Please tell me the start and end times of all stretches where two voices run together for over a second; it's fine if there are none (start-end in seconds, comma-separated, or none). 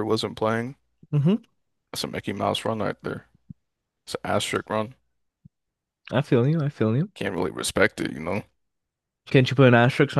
none